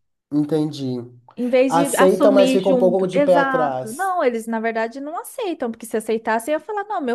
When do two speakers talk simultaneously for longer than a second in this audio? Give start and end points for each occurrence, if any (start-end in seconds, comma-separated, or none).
1.7-4.1